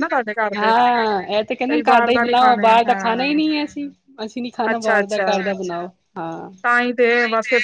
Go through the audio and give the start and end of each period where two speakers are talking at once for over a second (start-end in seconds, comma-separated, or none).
1.7-3.4